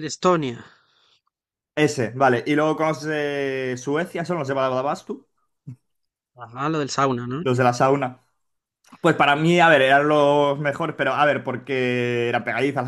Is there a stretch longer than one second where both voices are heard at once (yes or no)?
no